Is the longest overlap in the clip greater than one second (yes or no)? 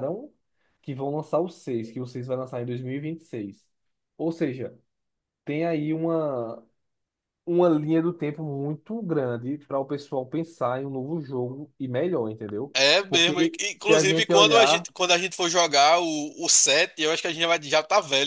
yes